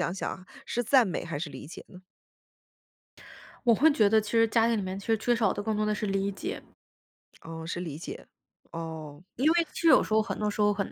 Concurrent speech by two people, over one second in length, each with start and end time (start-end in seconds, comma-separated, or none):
none